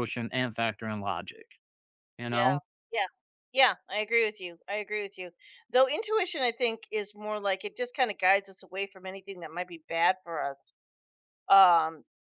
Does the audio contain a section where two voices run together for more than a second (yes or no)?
no